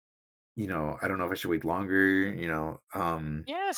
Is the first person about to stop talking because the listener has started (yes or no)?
yes